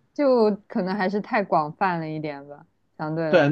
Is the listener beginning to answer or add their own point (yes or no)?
yes